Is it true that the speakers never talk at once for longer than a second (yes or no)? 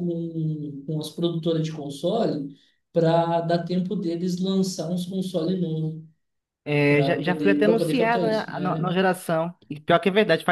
no